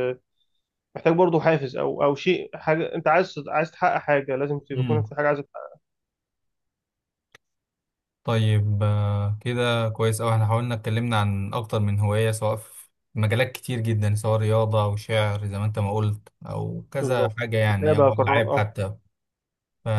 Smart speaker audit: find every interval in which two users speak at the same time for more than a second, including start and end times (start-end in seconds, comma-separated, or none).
17.0-18.6